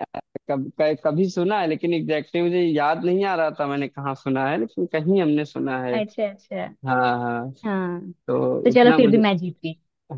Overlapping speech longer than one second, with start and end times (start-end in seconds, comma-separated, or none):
none